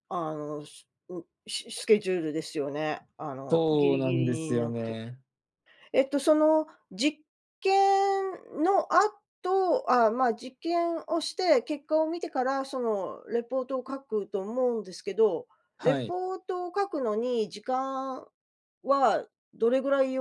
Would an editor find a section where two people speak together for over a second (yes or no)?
yes